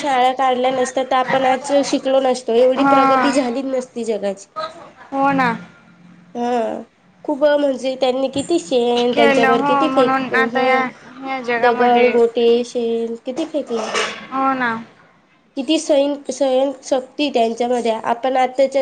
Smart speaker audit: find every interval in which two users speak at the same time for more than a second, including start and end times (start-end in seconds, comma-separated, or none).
9.1-10.8